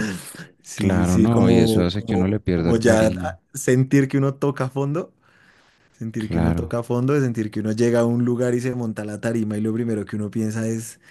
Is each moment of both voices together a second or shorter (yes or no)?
no